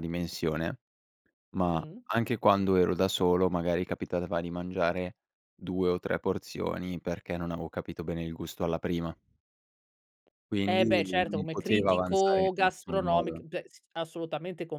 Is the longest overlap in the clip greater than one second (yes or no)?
yes